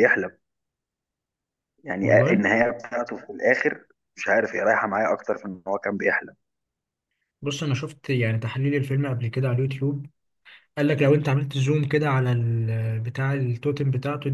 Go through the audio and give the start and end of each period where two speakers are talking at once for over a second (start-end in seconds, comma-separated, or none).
none